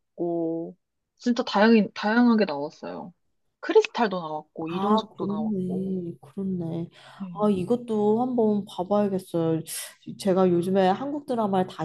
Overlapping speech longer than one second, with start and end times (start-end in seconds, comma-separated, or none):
4.7-6.0